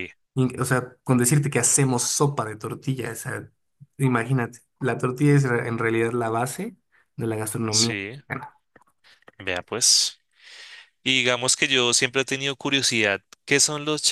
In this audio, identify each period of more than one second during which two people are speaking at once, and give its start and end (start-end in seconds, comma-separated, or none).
none